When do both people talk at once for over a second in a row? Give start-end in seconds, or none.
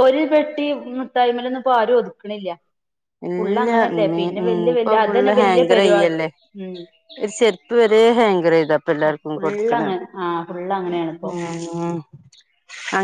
4.8-6.2